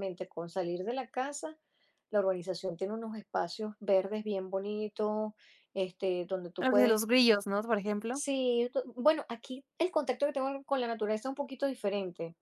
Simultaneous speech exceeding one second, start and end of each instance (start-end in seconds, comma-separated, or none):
none